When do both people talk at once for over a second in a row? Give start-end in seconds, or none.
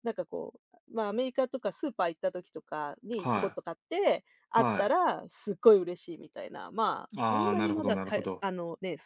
7.2-8.4